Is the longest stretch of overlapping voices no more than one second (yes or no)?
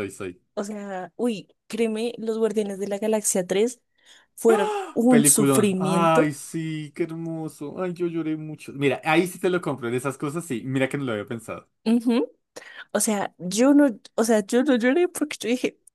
no